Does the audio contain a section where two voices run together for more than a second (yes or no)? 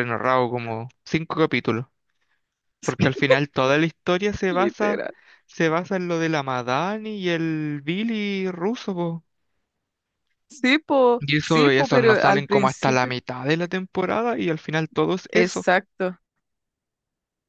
yes